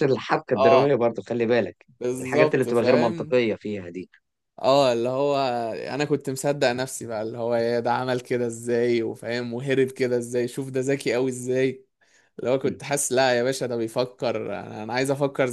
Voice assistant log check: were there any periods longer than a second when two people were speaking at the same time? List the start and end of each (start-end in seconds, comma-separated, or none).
2.0-3.4